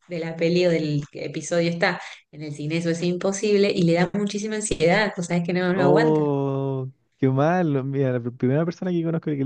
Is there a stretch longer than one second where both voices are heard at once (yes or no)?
no